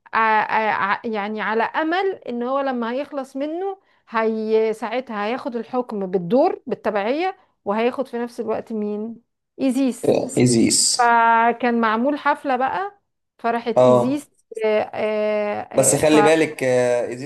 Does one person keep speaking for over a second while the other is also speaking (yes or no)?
no